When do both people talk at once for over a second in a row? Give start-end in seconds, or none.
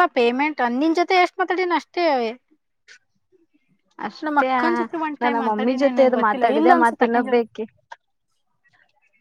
5.2-7.4